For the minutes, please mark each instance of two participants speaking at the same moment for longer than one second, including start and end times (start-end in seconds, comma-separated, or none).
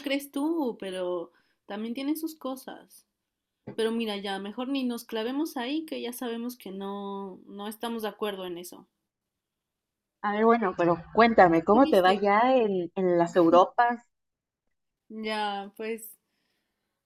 none